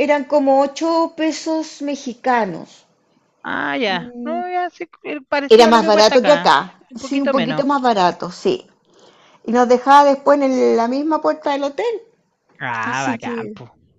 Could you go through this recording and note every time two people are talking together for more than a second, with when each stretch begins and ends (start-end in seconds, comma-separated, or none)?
5.5-7.6